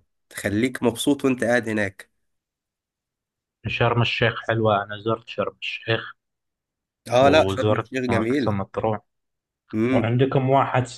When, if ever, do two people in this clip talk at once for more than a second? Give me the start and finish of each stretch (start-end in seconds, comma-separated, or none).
7.2-8.6